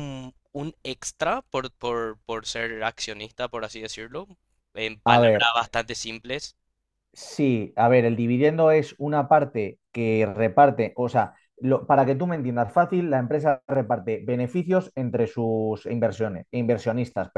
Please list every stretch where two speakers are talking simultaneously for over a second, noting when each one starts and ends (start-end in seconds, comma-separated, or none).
none